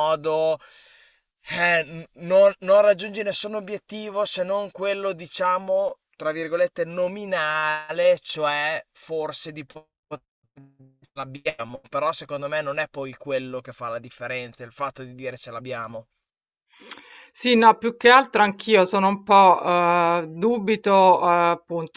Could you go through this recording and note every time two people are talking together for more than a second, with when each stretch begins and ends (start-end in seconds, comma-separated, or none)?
none